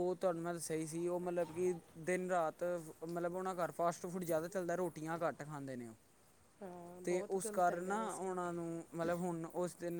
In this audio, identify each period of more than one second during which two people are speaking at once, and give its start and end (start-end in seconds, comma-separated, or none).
7.0-8.3